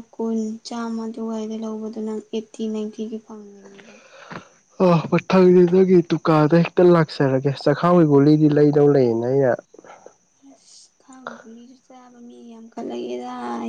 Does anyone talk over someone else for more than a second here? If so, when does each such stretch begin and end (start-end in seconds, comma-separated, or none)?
none